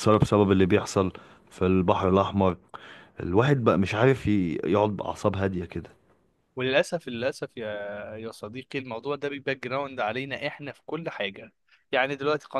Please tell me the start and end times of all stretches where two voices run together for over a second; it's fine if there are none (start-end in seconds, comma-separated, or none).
none